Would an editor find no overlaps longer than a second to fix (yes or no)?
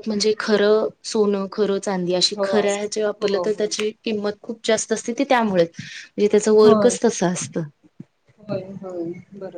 no